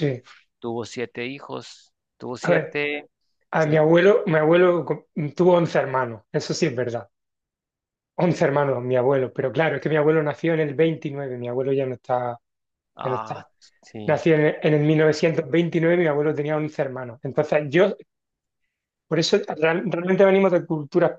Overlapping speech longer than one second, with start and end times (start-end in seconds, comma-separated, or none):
none